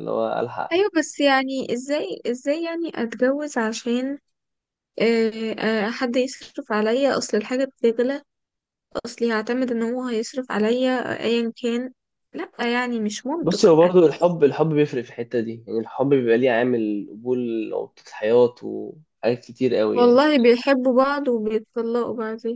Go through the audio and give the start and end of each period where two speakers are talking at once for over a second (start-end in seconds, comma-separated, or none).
none